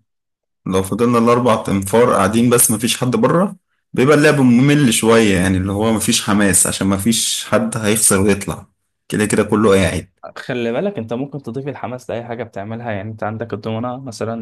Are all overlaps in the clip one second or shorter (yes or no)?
yes